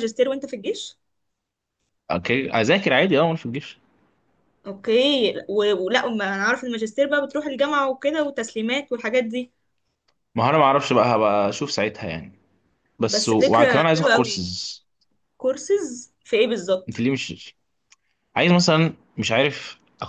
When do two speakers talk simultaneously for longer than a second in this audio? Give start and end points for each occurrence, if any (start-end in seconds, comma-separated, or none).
13.1-14.4